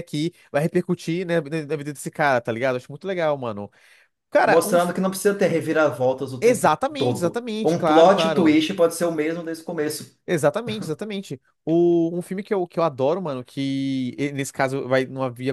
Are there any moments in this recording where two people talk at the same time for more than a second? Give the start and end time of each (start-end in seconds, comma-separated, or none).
6.4-8.6